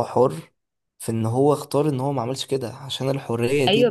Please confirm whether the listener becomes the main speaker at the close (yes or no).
yes